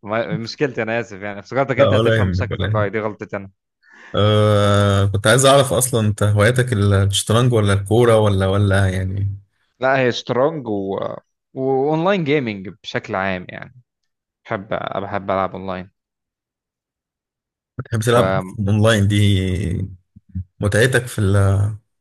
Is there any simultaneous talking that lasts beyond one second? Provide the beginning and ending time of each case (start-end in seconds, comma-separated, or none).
1.8-3.0